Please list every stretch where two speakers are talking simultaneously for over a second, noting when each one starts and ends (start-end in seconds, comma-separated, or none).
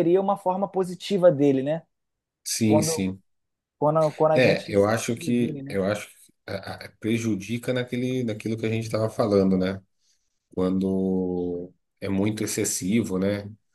4.3-5.8